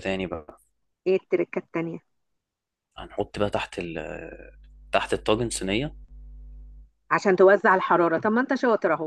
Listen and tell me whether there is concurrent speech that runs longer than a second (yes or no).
no